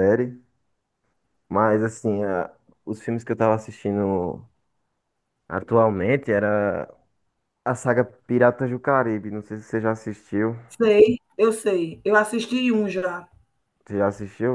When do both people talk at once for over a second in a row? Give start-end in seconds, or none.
none